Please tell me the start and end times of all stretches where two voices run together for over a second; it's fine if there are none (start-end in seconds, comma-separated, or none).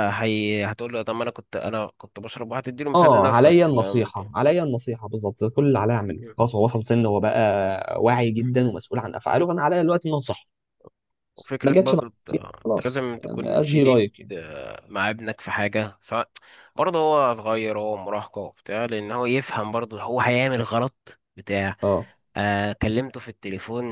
2.9-4.2, 11.6-14.3